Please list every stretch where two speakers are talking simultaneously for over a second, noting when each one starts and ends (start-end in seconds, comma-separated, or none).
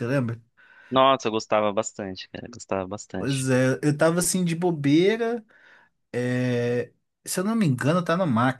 none